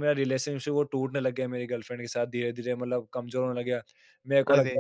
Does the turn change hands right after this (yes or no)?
no